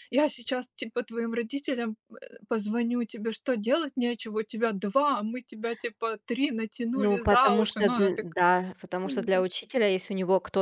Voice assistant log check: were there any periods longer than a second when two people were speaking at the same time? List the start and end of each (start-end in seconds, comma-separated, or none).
6.9-8.4